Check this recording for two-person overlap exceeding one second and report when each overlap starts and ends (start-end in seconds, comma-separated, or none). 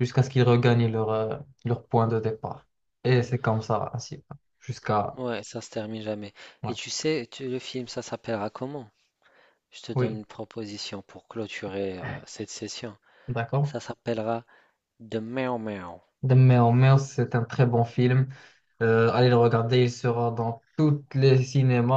none